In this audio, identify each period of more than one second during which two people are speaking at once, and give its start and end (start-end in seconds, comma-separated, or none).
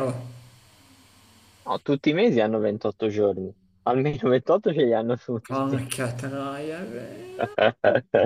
none